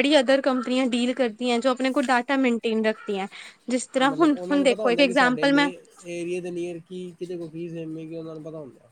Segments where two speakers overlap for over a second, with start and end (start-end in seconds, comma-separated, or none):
4.0-5.7